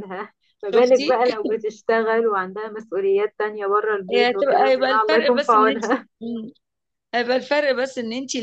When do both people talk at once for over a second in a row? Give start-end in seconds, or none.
4.1-5.8